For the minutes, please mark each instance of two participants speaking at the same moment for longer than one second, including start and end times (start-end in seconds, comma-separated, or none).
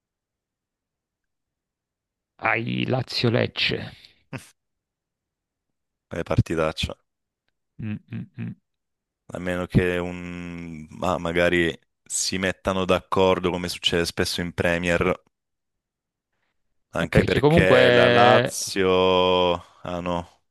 17.0-18.6